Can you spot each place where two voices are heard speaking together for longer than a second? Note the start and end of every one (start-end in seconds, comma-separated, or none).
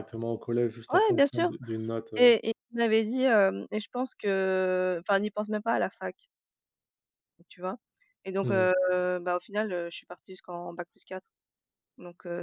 none